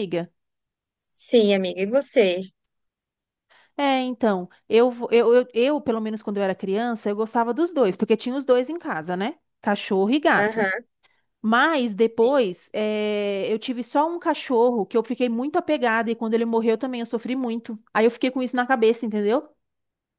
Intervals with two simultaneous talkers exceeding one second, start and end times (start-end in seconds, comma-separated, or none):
none